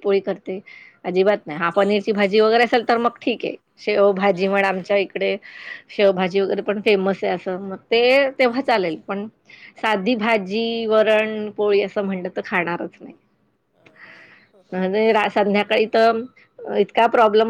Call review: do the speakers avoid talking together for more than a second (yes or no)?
no